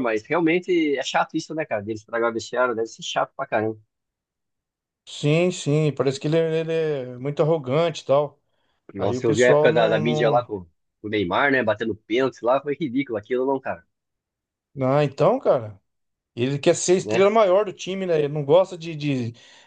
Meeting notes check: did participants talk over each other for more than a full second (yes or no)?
yes